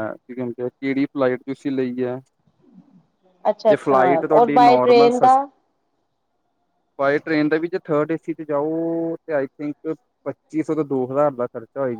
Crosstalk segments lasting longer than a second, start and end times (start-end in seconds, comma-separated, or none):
3.7-5.3